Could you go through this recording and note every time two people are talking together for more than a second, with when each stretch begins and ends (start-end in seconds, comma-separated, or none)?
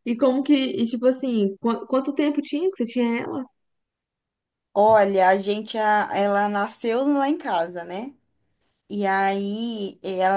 none